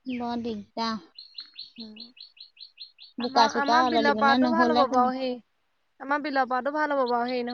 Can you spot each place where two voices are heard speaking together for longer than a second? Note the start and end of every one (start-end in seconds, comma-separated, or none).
3.3-5.1